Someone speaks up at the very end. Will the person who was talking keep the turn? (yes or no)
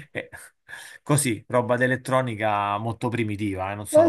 no